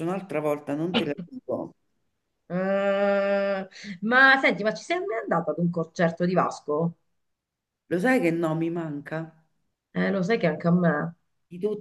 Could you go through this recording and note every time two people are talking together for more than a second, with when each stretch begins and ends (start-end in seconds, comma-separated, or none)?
none